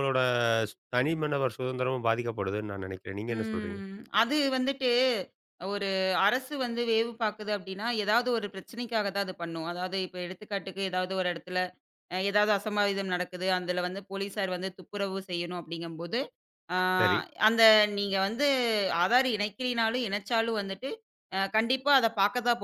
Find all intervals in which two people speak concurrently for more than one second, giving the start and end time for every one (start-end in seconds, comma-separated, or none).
none